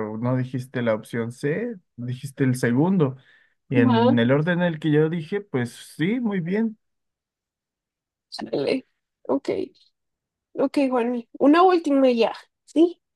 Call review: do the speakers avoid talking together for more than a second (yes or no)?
yes